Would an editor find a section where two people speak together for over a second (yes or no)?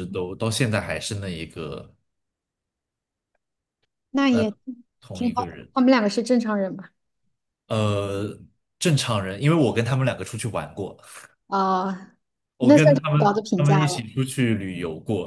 yes